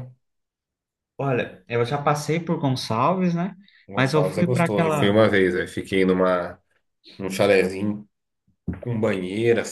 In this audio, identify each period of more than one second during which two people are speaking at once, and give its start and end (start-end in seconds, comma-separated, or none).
4.0-5.2